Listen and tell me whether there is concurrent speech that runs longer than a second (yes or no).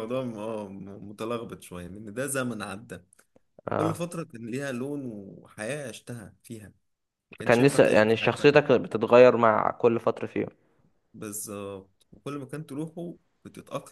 yes